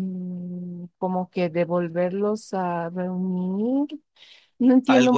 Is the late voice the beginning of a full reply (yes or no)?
yes